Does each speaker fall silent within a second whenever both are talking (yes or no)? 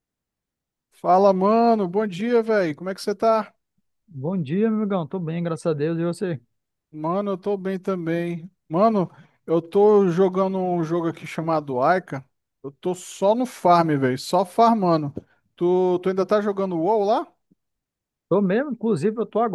yes